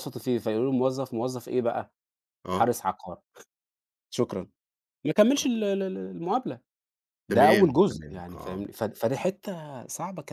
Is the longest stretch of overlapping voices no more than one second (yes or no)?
no